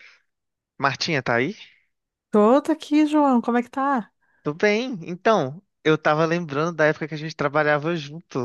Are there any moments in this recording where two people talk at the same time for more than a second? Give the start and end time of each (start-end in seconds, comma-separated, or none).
none